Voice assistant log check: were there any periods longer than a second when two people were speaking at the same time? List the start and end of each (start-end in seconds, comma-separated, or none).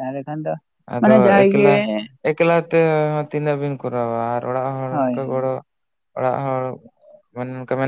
none